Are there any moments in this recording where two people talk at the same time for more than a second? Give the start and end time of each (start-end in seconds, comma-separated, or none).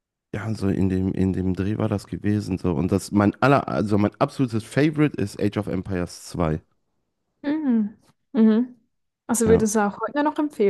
none